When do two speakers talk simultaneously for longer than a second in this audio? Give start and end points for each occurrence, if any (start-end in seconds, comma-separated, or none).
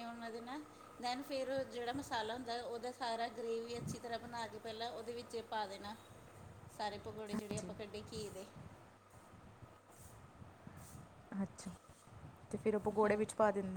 none